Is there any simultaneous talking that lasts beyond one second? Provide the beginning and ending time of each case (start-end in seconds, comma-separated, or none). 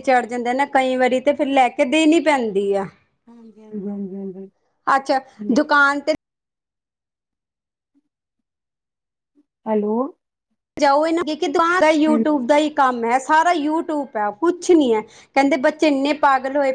none